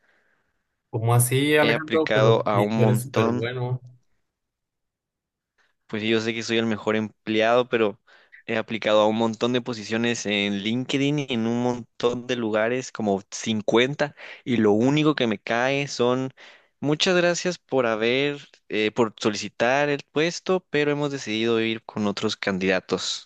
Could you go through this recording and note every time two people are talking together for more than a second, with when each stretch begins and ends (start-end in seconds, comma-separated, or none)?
1.6-3.5